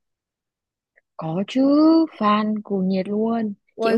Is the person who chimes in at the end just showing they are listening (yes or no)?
no